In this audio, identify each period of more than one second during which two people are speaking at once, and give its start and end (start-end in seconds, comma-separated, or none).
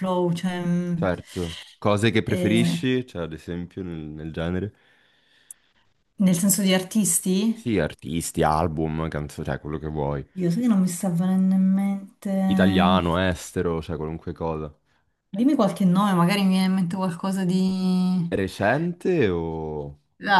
none